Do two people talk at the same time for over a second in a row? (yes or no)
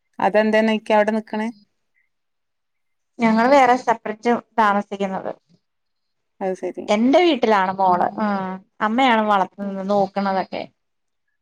no